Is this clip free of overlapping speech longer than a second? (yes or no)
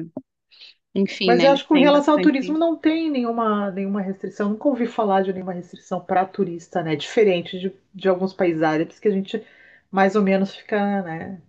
no